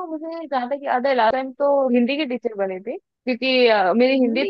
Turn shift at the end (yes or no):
no